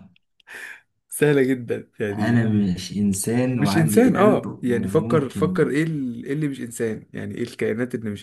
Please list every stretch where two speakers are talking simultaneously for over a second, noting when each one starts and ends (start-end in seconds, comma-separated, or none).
3.5-5.7